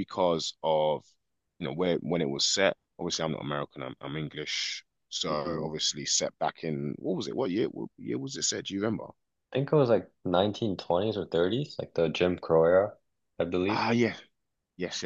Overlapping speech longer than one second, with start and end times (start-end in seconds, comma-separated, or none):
none